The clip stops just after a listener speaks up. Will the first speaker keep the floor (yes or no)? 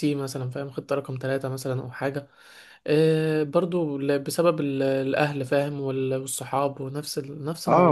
no